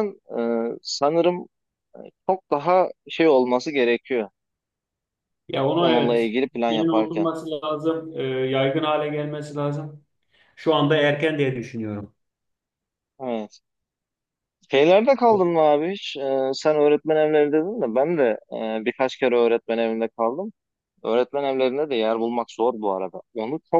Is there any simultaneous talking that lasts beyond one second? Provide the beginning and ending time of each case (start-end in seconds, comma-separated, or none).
5.8-7.3